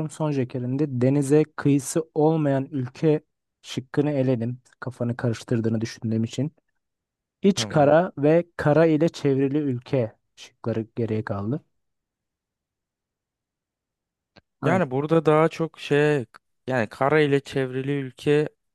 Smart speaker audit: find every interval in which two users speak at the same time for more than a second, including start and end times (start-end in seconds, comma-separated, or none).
none